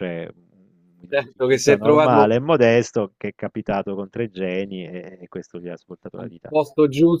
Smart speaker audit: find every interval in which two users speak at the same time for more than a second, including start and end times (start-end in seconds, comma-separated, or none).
1.1-2.3